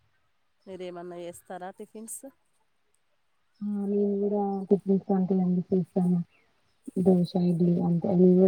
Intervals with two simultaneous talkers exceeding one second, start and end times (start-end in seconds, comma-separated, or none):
none